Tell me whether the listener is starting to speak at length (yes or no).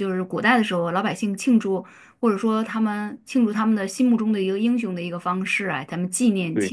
no